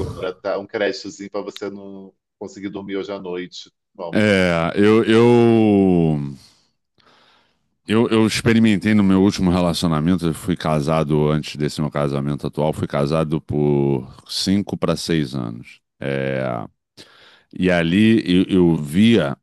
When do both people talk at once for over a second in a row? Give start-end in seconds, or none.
none